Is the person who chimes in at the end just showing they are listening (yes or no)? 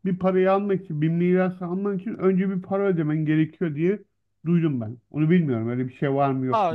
no